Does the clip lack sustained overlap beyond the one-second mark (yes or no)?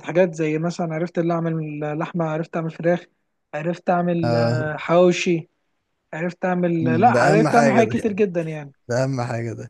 no